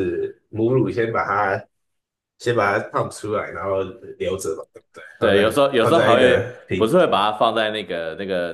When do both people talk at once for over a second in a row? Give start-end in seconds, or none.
5.2-7.3